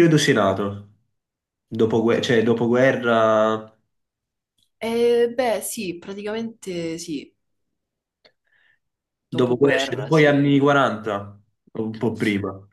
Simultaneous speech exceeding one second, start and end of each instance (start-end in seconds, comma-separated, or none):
9.3-10.6